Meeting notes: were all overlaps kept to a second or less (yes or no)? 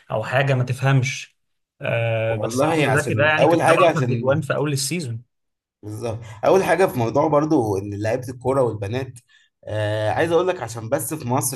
no